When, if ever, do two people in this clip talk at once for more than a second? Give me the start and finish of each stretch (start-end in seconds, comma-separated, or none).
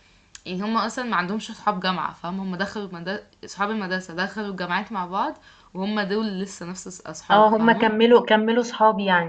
none